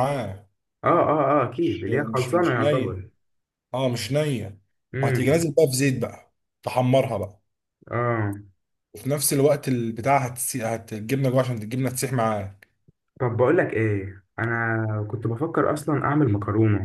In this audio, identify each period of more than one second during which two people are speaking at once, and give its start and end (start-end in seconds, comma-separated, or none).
1.5-3.0